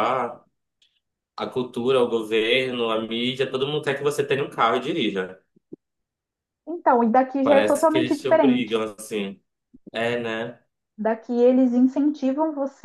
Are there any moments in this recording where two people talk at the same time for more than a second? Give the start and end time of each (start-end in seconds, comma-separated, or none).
7.4-8.8